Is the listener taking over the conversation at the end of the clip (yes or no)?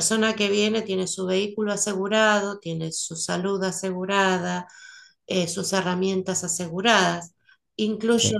no